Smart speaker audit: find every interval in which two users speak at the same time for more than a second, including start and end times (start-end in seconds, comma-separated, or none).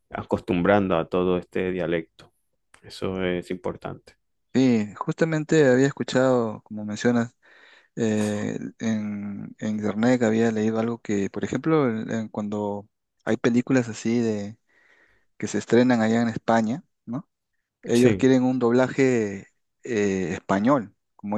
none